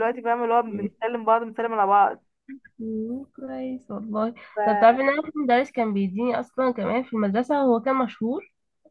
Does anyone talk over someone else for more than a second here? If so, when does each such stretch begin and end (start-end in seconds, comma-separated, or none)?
none